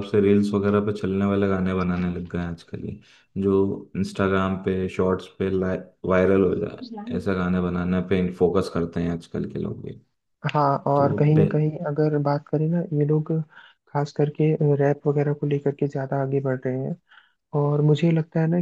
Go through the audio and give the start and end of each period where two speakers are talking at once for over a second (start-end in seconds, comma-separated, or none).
none